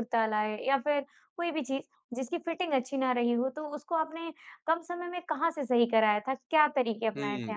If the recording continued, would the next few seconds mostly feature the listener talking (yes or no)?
yes